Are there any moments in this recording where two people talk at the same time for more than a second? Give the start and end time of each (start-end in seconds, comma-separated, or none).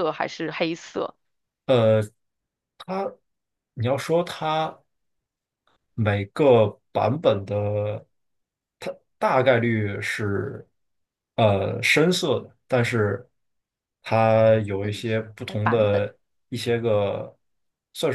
14.7-16.1